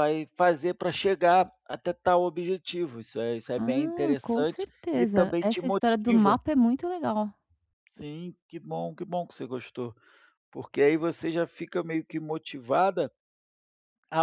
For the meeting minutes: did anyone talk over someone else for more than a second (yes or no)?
yes